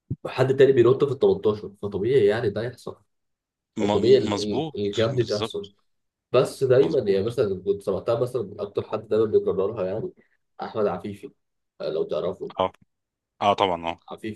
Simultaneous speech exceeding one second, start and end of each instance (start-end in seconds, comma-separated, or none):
3.8-5.7